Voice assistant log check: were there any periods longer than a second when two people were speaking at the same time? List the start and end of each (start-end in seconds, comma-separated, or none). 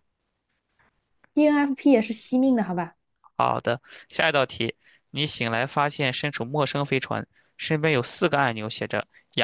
none